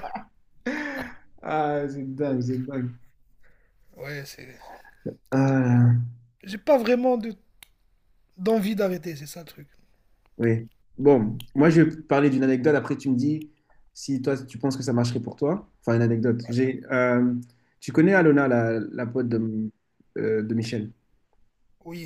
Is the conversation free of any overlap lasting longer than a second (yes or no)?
yes